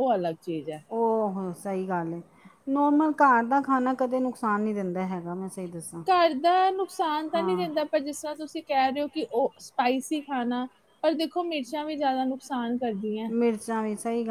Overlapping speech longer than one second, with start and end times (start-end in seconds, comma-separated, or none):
none